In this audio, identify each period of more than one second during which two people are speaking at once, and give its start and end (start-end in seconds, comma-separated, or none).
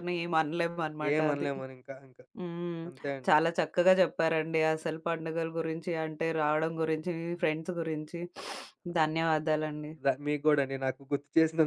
none